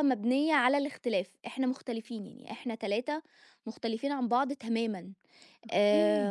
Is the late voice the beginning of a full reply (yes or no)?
no